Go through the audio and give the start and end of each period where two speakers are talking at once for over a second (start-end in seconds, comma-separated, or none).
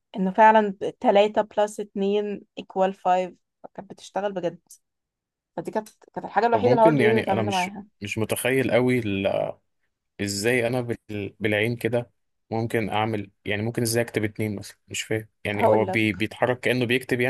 6.5-7.8